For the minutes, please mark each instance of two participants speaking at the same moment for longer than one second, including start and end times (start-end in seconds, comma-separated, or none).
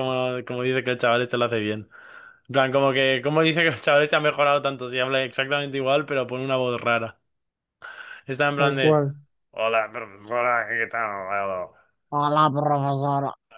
none